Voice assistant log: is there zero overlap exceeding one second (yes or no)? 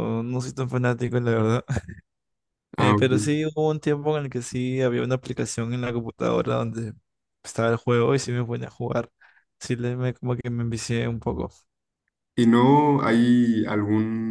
yes